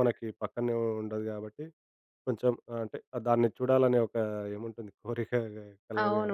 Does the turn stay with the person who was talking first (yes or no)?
no